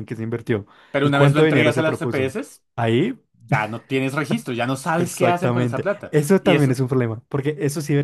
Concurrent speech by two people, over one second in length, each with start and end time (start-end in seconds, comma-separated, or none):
1.0-2.3, 5.0-6.8